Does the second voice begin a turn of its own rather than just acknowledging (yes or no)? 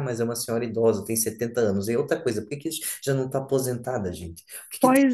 yes